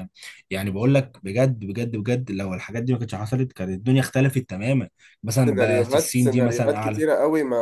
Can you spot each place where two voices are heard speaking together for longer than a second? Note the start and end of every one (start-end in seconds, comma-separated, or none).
5.4-7.0